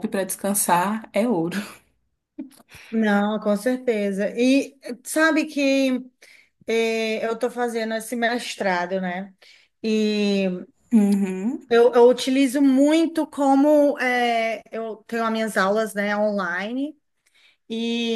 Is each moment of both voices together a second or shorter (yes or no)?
yes